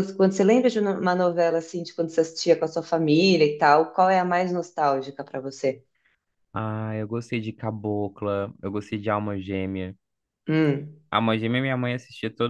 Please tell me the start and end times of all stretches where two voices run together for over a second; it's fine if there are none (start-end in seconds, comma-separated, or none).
none